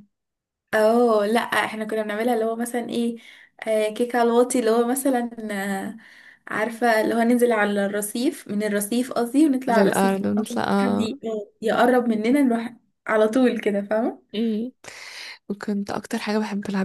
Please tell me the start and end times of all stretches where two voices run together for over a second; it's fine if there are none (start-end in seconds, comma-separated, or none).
9.7-11.1